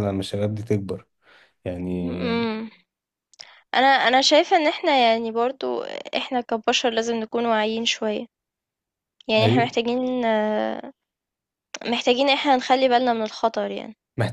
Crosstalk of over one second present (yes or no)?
no